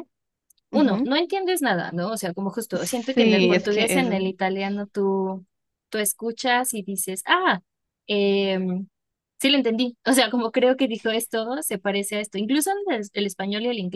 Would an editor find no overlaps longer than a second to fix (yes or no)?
no